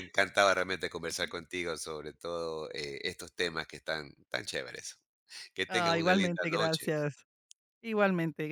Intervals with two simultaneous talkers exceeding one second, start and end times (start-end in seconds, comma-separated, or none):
5.7-6.9